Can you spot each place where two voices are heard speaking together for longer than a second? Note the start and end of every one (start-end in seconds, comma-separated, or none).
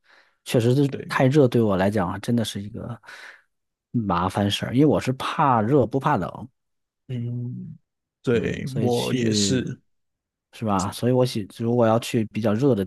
8.3-9.6